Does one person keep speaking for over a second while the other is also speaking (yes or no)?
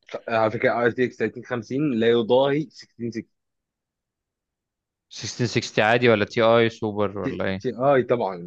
no